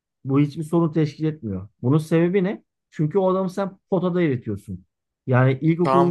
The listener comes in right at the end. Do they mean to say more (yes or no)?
yes